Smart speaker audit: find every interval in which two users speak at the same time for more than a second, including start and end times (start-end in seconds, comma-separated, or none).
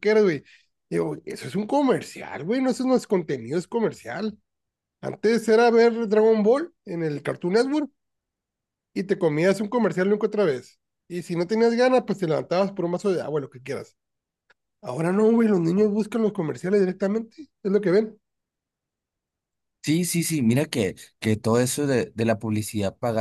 none